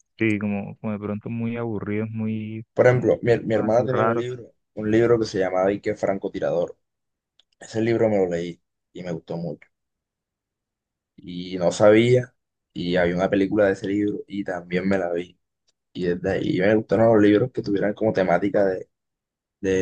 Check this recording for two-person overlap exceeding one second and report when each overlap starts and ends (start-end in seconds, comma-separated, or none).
2.7-4.2